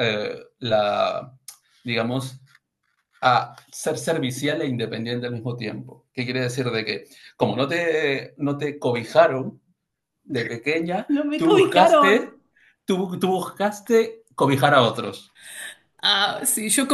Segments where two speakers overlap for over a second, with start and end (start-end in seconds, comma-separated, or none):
11.2-12.4